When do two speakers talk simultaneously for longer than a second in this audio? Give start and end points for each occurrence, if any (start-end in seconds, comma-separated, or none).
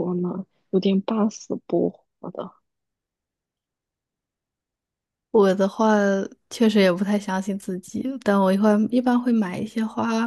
none